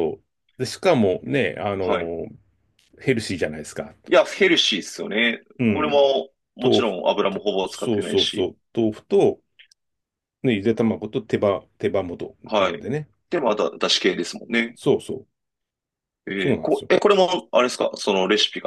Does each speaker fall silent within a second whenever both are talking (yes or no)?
no